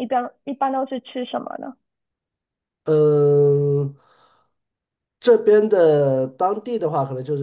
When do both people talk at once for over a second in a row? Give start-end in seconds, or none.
none